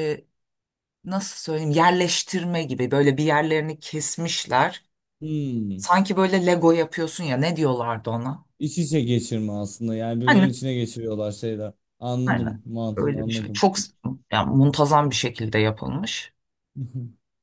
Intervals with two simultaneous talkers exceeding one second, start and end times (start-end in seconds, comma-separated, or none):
12.3-13.6